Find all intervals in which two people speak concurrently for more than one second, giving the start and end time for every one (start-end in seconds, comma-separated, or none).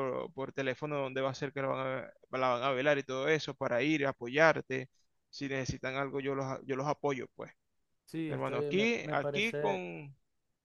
8.3-9.8